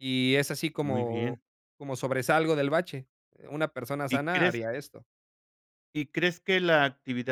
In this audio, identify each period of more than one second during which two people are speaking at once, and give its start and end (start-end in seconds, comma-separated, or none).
none